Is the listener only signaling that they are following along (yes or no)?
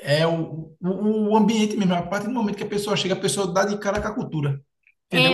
no